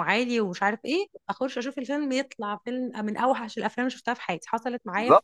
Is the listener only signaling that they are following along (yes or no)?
no